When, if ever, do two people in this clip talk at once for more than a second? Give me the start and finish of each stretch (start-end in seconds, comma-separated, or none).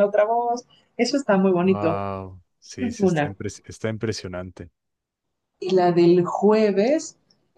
none